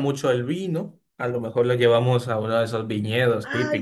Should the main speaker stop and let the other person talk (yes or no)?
yes